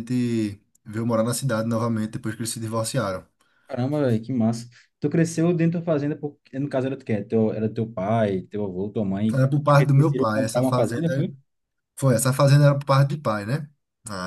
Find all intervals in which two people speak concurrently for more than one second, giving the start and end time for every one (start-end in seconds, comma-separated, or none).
9.3-11.3